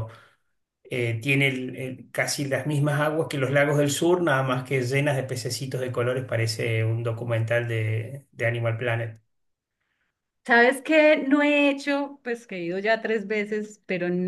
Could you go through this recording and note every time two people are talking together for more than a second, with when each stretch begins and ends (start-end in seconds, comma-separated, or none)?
none